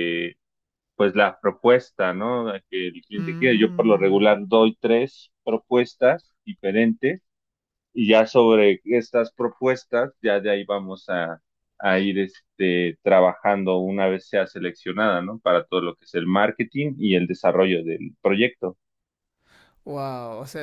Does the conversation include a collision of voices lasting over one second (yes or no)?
yes